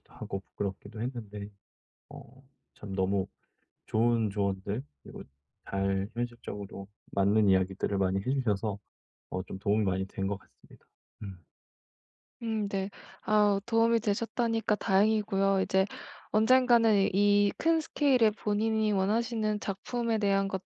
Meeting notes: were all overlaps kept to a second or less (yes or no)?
yes